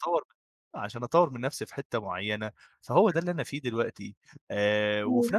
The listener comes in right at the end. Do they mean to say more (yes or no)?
no